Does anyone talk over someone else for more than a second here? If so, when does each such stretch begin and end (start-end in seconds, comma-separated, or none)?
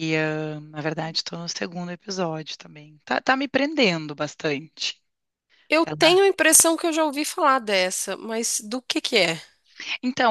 none